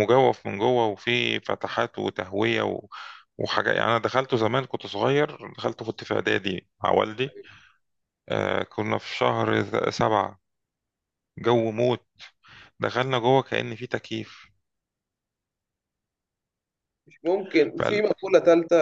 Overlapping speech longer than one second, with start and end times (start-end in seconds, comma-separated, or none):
none